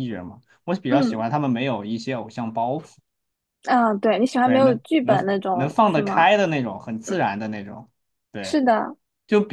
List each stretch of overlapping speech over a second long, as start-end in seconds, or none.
4.4-6.3